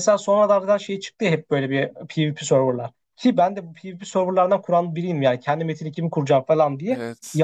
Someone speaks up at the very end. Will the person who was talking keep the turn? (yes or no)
yes